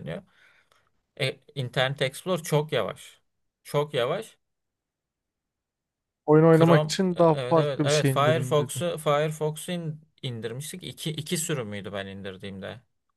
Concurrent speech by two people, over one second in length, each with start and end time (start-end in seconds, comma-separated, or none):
6.5-8.8